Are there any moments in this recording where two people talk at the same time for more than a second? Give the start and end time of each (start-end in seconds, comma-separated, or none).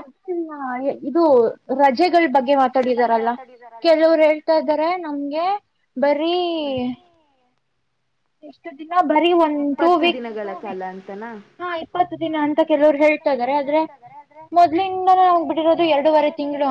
none